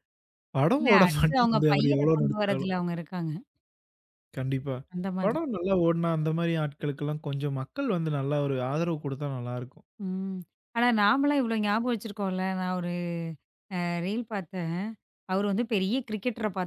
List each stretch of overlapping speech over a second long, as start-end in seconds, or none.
0.8-2.7